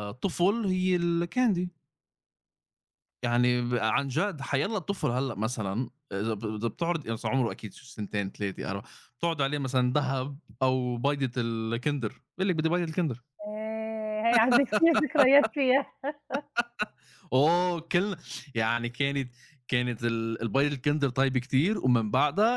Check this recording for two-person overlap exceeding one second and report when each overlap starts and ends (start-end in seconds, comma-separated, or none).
none